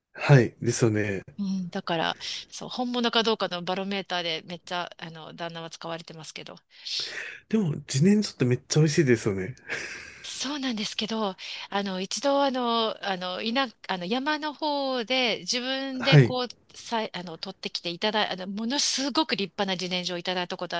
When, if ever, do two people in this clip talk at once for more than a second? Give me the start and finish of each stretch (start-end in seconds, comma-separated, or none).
none